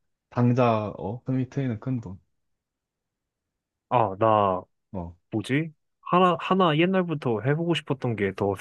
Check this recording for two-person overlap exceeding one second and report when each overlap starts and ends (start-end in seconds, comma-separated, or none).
none